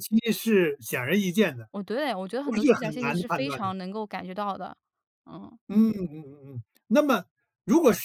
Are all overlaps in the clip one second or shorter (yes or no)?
no